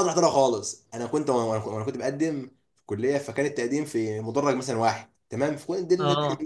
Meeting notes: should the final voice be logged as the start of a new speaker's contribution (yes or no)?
no